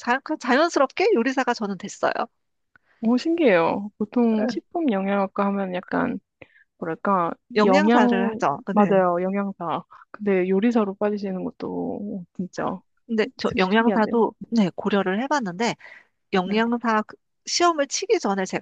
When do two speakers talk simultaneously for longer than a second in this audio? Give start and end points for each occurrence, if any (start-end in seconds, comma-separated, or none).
7.5-9.0